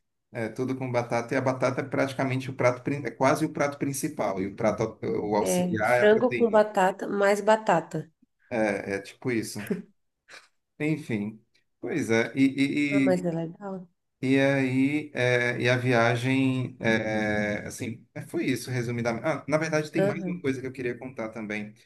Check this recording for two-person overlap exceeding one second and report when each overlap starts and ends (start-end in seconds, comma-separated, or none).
5.4-6.6